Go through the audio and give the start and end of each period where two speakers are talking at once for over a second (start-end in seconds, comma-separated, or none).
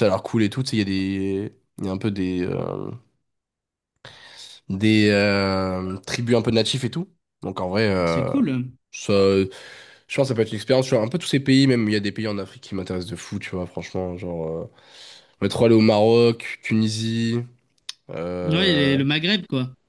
none